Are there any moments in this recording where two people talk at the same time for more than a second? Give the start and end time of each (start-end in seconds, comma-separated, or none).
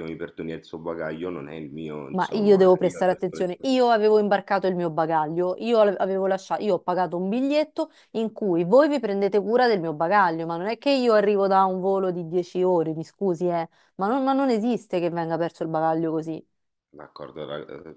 2.1-3.7